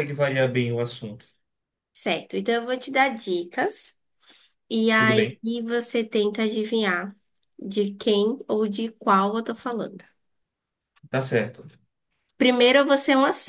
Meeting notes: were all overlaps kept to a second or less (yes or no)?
yes